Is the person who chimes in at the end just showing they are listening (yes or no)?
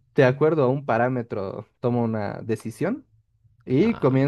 yes